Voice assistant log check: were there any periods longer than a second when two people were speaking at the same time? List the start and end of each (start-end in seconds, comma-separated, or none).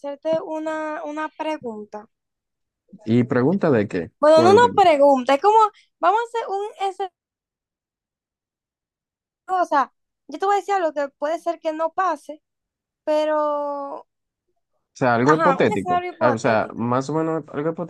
15.2-16.9